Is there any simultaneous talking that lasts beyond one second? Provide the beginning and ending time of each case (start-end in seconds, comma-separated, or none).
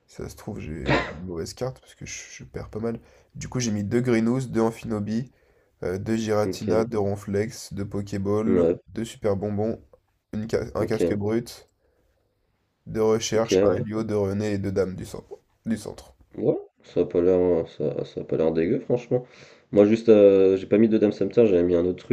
none